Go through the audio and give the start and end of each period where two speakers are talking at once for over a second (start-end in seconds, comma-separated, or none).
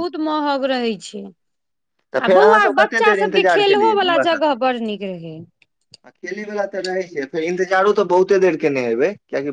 2.3-4.5